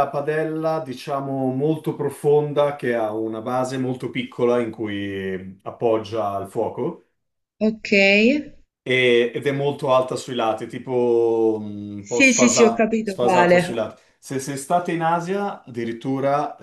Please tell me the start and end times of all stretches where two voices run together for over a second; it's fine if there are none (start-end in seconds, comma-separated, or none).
12.0-13.8